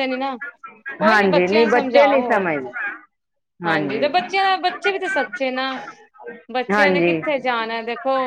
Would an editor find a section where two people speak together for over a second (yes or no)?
yes